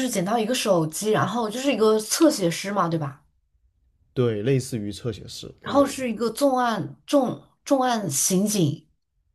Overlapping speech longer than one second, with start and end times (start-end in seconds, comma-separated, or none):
none